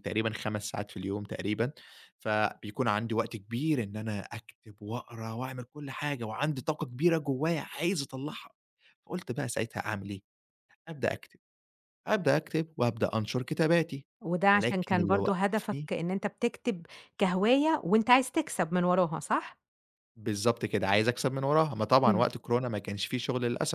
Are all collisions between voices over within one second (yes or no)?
no